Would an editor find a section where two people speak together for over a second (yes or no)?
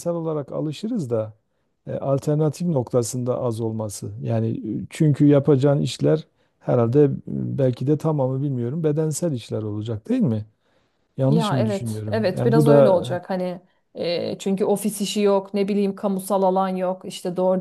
yes